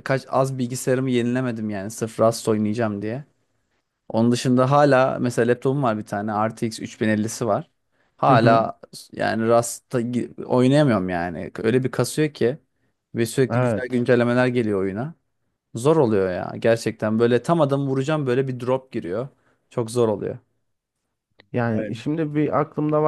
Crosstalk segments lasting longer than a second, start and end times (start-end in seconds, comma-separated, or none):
none